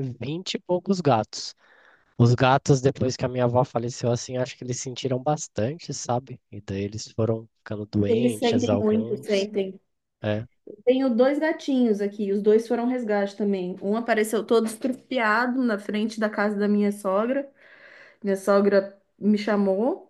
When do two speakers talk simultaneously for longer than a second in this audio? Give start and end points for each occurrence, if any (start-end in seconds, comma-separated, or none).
8.1-9.5